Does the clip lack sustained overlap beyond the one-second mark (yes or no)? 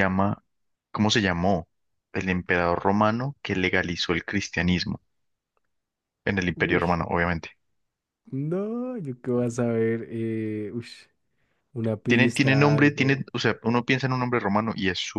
no